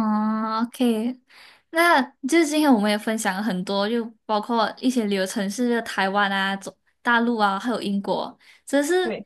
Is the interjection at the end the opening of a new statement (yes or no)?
no